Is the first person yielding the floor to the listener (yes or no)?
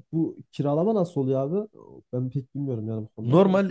yes